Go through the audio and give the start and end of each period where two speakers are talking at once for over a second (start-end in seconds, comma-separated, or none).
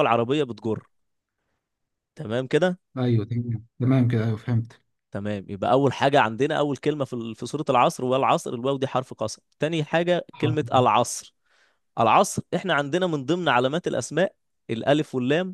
none